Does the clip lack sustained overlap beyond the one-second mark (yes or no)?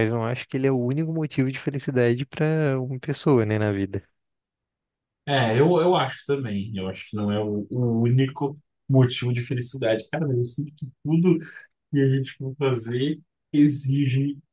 yes